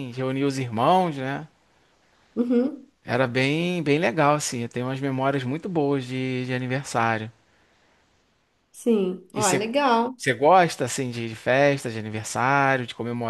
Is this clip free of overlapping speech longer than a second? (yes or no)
yes